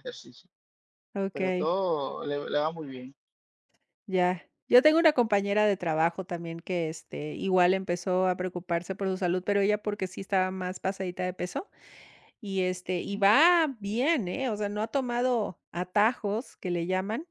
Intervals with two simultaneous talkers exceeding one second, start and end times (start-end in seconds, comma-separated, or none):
none